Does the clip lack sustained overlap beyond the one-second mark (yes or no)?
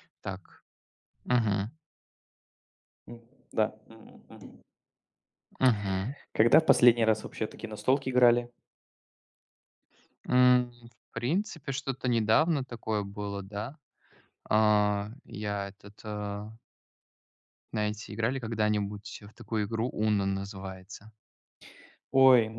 yes